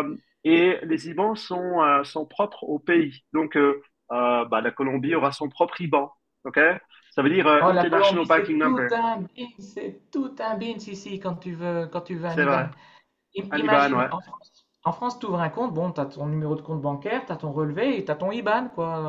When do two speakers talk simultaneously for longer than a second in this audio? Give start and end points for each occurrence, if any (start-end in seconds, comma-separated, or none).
7.6-8.9